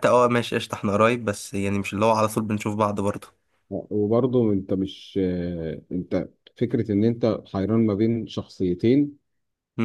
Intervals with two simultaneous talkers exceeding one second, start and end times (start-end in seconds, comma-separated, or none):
none